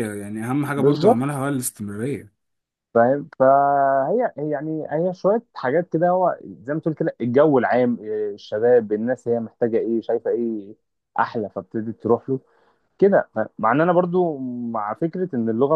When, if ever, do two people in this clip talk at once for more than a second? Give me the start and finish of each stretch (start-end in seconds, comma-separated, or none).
none